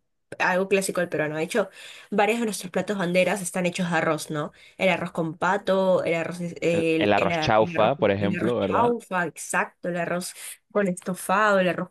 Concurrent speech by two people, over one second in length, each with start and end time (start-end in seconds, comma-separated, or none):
6.7-8.9